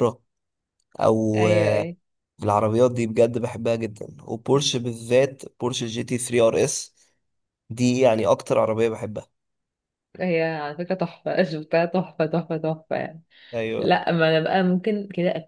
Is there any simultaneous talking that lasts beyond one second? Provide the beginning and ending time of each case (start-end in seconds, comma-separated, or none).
none